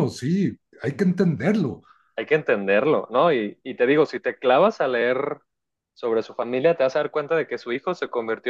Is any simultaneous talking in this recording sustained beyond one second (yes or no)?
no